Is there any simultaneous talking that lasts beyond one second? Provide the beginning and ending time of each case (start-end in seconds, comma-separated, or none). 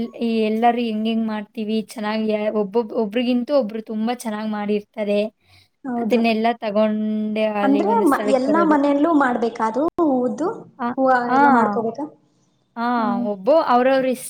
none